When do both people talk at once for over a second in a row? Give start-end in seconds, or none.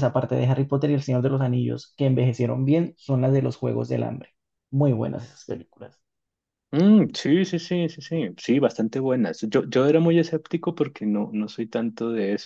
none